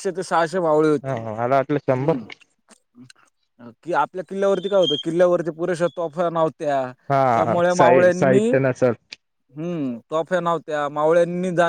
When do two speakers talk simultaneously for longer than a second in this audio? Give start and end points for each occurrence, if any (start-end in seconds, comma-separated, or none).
7.3-8.9